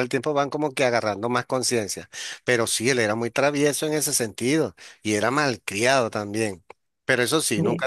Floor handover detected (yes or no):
no